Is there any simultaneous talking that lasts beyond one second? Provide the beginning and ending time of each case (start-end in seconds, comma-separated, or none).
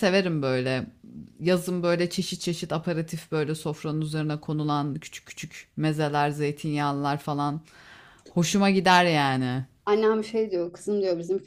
none